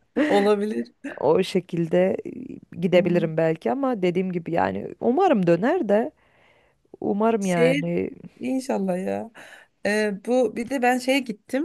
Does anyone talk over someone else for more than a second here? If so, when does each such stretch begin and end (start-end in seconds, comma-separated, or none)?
none